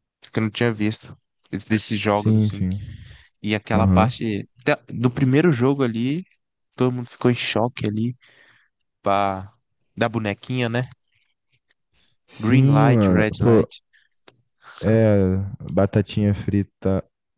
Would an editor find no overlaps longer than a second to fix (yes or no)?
no